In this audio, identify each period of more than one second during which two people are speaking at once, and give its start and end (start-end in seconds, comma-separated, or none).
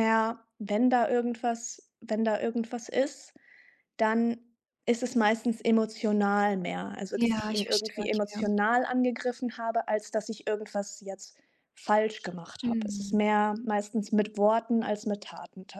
7.1-8.5